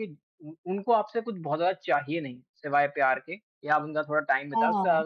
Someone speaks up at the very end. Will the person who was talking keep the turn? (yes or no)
yes